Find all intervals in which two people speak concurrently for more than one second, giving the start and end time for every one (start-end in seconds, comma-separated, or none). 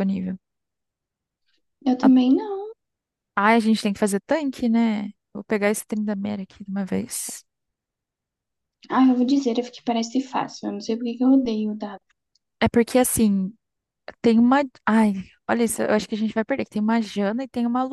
none